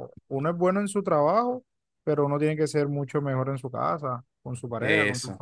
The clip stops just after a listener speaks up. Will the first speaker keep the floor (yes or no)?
no